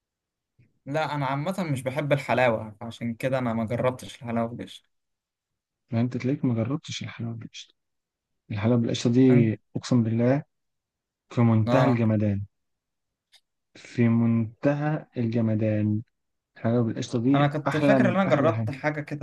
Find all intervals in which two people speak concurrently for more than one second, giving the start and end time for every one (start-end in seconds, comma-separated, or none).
17.4-18.7